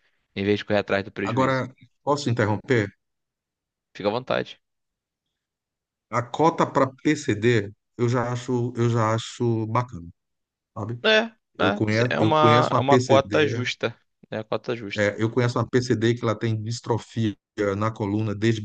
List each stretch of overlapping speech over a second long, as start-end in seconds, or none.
12.1-13.6